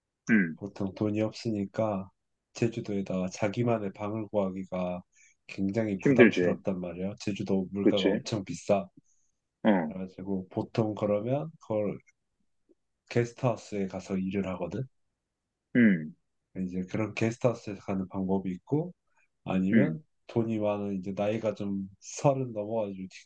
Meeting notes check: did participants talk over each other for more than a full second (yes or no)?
no